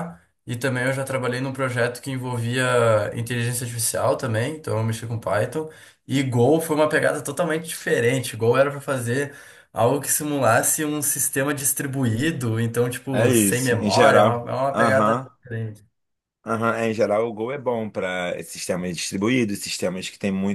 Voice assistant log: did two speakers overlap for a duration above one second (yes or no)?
yes